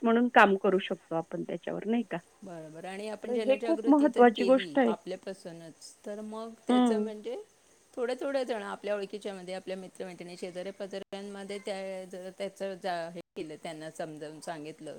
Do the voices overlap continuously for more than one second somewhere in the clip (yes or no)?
yes